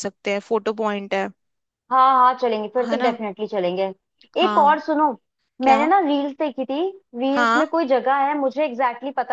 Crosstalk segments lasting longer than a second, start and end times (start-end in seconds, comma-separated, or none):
none